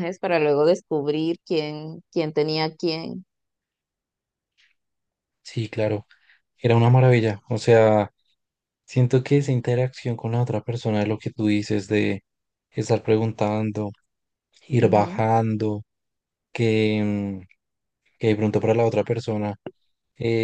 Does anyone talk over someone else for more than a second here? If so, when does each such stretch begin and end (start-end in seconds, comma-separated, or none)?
none